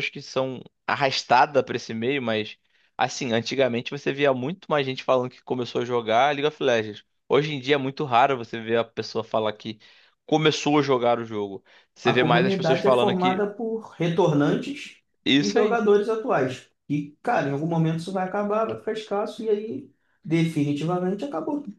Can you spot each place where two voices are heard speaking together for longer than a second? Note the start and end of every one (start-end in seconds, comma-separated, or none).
12.0-13.5